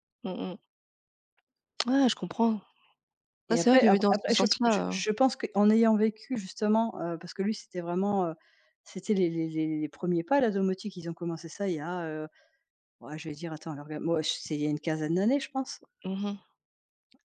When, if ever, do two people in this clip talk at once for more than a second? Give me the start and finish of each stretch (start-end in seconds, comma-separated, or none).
3.5-5.0